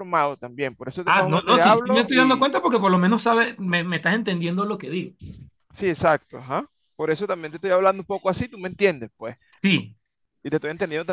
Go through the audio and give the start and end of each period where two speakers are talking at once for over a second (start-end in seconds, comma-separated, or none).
1.1-2.5